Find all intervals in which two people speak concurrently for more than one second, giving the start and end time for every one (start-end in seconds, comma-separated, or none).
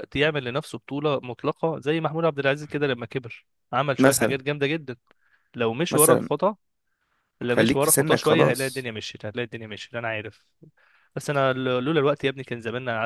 7.5-8.9